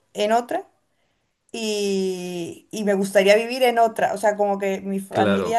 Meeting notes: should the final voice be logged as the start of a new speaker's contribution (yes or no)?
no